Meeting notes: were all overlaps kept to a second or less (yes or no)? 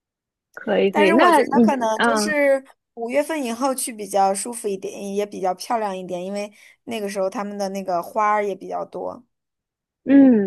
no